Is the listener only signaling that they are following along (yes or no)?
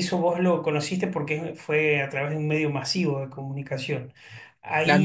yes